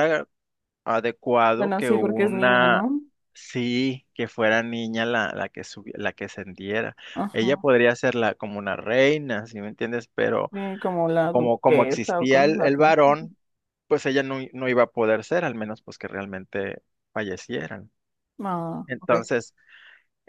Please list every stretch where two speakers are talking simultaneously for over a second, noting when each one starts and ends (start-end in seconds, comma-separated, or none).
1.5-2.9, 11.3-12.8